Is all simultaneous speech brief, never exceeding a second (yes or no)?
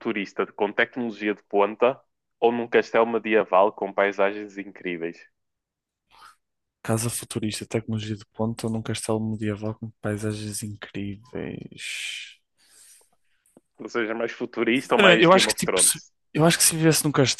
no